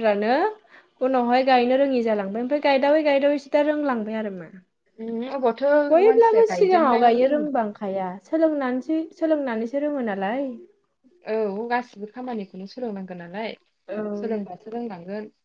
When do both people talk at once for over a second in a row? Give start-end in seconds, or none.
6.1-7.5